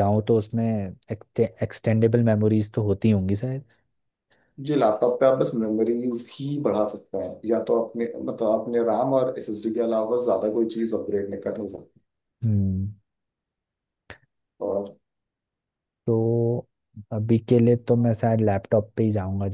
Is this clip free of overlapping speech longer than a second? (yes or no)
yes